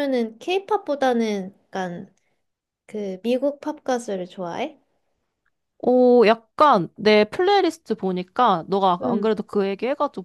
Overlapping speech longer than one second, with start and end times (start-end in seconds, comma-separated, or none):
none